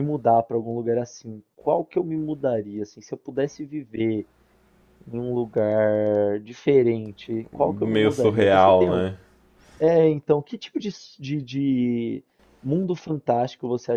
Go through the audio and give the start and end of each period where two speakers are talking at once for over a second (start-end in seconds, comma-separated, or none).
7.5-9.1